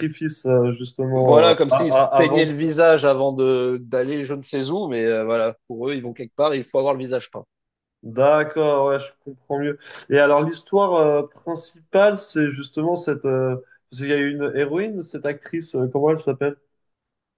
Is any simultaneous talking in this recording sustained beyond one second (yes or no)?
yes